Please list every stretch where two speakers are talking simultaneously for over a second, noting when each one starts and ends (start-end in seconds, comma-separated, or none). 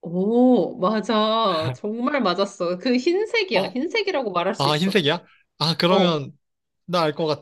none